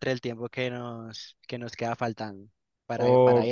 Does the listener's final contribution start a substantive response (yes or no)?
yes